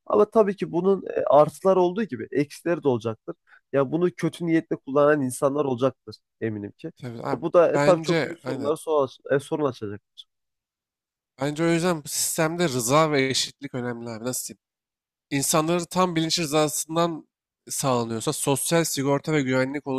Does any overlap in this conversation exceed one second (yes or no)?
yes